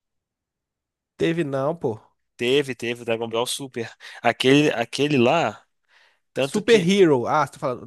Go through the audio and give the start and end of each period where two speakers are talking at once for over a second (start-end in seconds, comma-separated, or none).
none